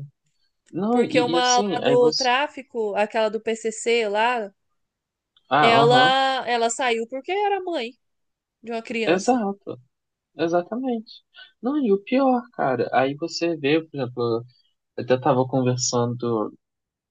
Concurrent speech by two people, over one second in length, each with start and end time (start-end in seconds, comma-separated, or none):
0.9-2.3